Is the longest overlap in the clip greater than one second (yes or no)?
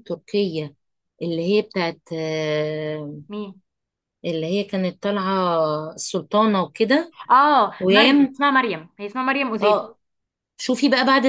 no